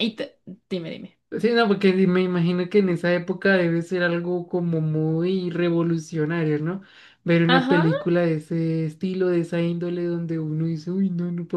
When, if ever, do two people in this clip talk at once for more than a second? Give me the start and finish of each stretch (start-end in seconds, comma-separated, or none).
none